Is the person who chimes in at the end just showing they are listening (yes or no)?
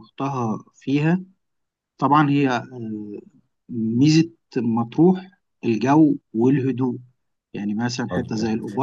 yes